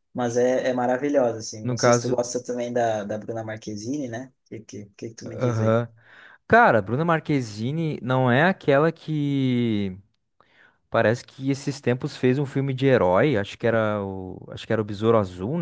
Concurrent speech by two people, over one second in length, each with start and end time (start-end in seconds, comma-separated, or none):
none